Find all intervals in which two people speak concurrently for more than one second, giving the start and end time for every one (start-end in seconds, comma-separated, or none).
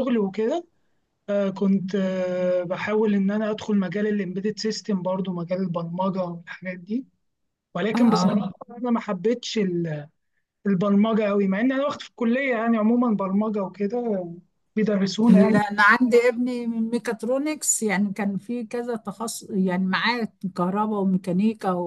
none